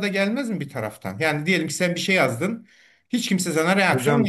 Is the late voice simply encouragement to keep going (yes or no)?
no